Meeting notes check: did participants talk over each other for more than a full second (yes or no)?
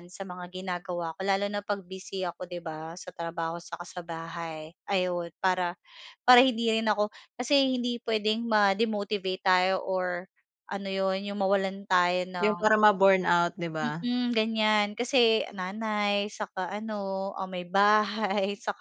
no